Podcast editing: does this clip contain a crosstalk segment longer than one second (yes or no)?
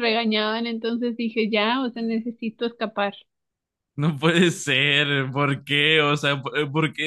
no